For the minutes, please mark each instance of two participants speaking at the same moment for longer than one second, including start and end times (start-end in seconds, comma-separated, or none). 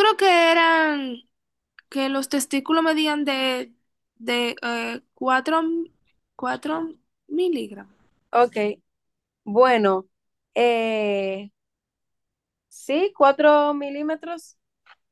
none